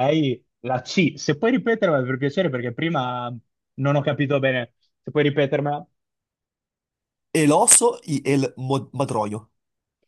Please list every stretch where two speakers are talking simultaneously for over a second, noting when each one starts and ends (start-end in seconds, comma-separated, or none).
none